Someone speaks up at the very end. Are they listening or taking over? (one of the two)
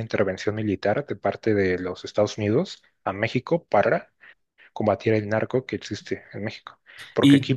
listening